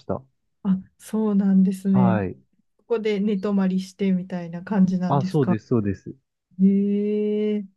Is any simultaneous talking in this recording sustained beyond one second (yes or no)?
no